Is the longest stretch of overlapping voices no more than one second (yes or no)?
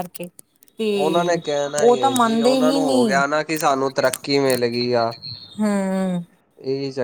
no